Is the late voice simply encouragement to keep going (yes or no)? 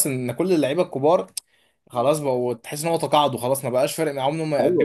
no